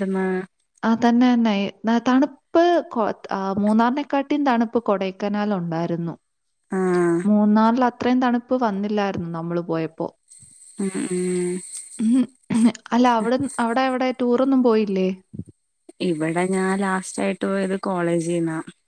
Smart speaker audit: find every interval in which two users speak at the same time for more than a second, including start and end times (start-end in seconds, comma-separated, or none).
none